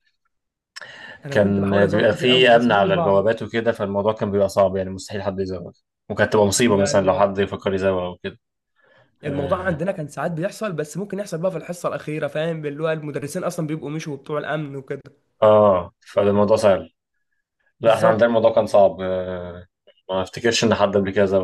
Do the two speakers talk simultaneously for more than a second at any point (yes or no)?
yes